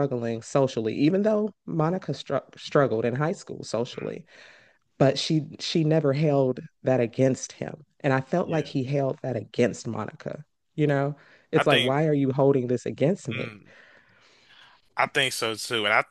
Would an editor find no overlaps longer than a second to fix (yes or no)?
yes